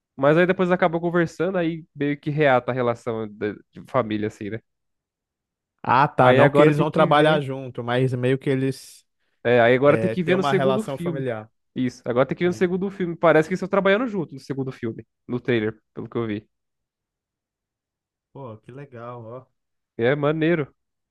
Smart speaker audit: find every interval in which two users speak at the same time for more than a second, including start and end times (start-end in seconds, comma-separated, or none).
6.2-7.5, 9.8-11.2